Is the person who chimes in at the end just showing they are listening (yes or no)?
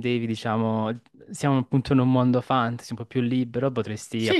yes